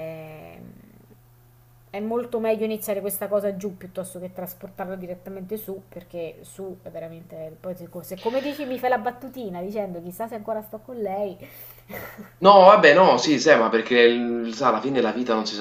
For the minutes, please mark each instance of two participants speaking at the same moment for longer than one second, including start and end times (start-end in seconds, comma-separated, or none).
none